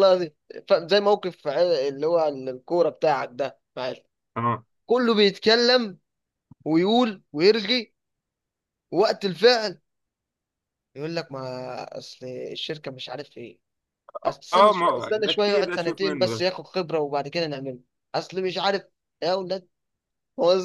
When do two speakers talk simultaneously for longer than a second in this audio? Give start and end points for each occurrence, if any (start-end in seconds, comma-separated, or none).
14.5-16.5